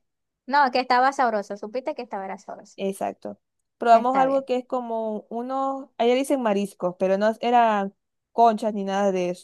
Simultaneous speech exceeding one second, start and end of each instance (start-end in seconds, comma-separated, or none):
none